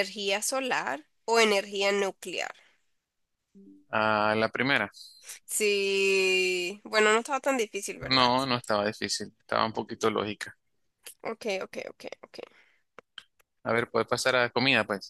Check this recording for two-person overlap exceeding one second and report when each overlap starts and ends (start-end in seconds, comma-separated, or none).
none